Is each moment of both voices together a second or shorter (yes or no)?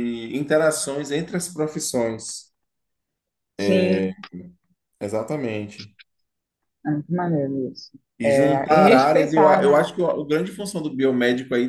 no